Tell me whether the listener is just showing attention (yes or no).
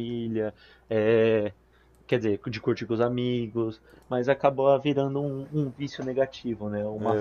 no